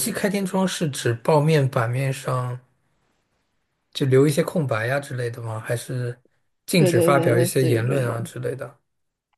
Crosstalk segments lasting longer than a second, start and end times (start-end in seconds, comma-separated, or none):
6.8-8.3